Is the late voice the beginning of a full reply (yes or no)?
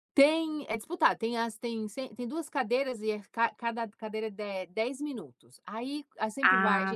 no